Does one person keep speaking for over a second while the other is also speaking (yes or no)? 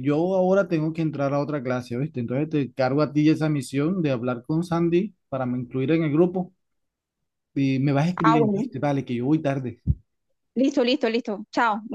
no